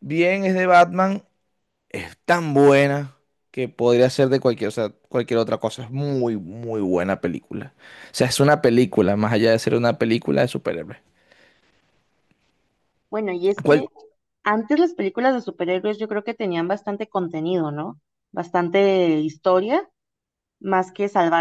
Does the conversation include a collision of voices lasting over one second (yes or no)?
no